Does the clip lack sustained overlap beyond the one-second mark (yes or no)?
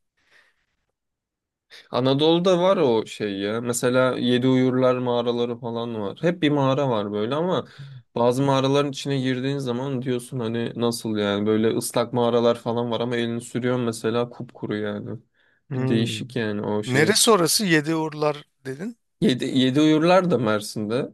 yes